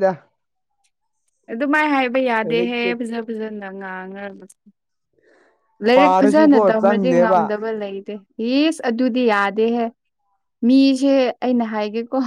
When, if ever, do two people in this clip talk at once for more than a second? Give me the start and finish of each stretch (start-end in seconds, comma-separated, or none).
6.0-7.4